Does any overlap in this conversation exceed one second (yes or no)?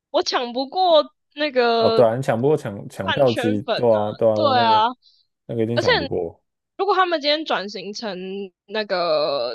yes